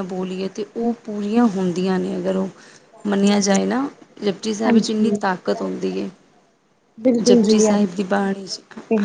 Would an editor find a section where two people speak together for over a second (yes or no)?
no